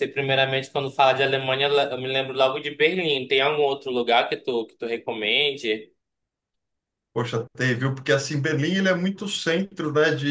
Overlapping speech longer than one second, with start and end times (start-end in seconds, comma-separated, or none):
none